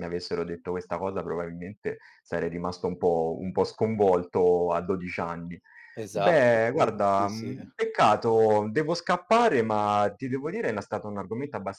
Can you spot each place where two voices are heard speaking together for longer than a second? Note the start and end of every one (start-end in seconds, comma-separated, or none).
6.1-7.7